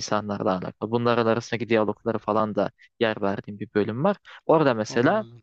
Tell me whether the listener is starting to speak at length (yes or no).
no